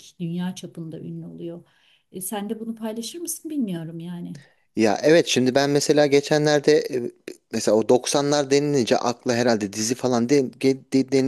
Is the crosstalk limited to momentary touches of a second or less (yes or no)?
yes